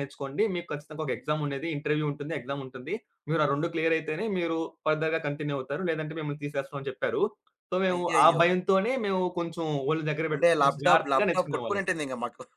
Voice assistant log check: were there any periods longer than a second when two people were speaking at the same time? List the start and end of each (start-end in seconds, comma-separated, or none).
10.3-11.8